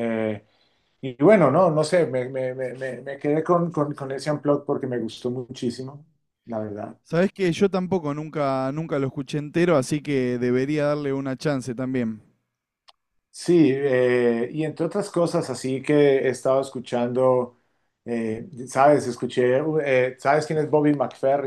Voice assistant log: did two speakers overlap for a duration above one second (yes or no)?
no